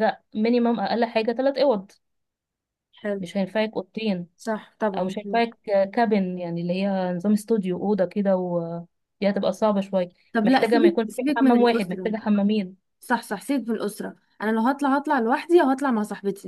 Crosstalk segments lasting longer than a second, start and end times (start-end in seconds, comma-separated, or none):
10.3-12.1